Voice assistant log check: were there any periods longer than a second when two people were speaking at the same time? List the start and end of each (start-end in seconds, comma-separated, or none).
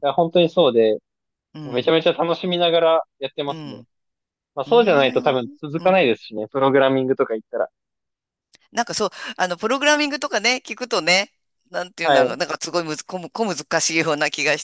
4.7-6.0